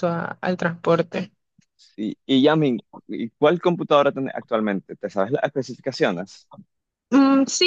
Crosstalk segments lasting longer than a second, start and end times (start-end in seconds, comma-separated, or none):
none